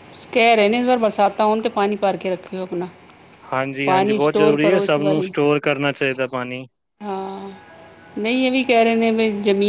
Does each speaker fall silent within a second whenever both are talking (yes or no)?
no